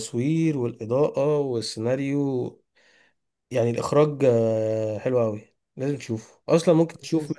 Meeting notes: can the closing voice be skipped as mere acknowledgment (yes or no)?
yes